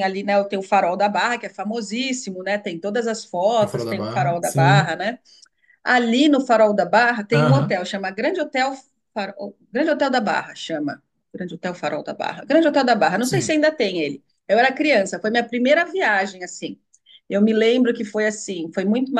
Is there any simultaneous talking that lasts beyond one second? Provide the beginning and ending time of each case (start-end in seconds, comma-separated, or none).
3.6-5.0